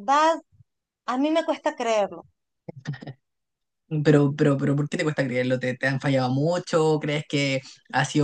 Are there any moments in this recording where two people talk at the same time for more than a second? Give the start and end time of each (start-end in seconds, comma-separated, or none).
none